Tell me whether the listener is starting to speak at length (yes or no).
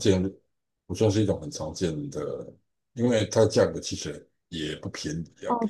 yes